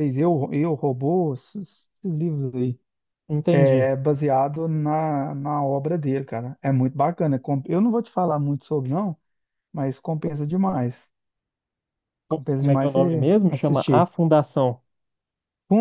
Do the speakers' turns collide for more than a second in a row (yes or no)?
yes